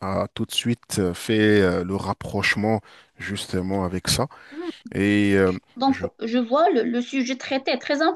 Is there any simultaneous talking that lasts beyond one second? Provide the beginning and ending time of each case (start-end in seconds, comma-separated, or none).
none